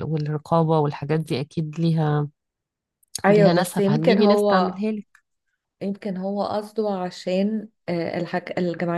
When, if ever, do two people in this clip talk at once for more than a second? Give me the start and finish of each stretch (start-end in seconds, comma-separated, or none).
3.3-4.8